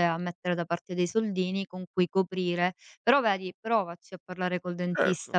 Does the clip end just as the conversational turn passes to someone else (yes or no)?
no